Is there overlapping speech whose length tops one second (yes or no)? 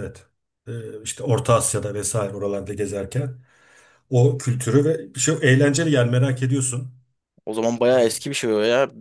no